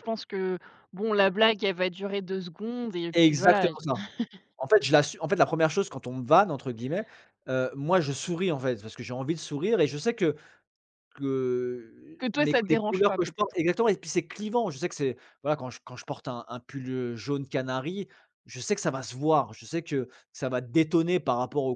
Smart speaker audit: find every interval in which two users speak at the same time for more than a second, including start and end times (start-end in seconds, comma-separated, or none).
12.2-13.6